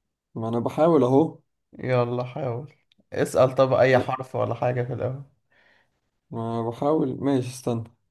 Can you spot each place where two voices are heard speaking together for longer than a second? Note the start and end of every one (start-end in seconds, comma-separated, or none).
none